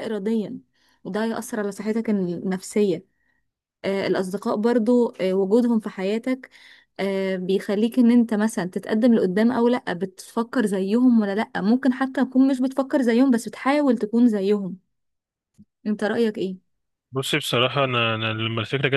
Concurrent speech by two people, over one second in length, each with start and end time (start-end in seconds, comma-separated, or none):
none